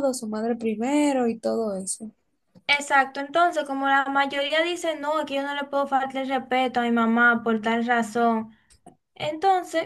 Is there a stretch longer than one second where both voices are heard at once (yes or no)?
no